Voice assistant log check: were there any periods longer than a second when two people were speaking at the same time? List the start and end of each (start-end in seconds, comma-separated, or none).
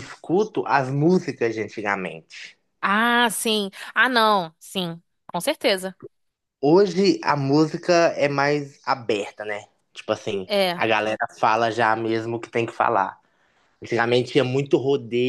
none